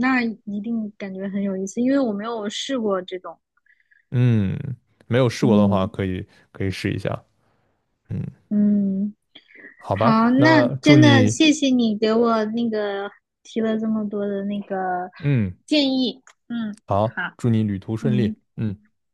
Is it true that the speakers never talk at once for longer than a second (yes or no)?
no